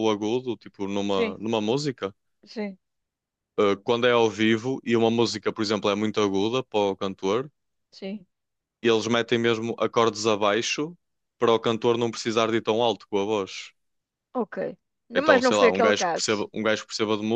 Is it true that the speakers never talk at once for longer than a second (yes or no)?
no